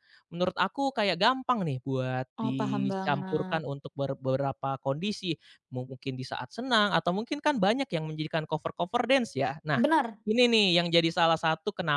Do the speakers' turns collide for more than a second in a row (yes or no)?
yes